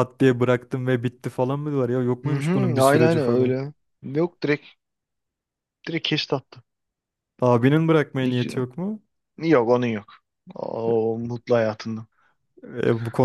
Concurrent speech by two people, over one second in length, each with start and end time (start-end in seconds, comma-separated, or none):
2.2-3.6